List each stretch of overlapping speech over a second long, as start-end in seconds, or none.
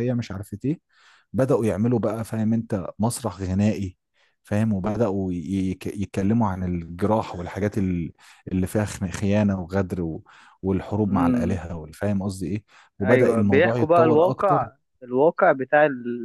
13.0-14.7